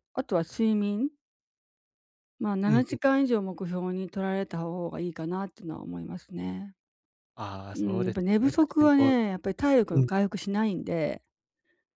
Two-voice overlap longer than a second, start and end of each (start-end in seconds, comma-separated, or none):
7.7-9.1